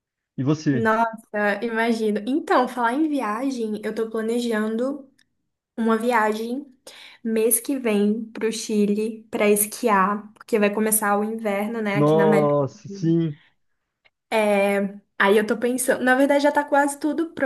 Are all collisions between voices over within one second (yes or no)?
no